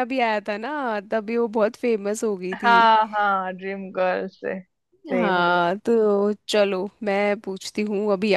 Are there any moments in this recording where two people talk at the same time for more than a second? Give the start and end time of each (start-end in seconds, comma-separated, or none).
none